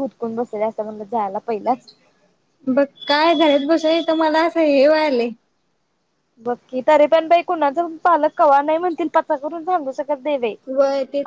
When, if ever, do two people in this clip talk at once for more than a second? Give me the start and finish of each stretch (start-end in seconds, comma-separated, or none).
none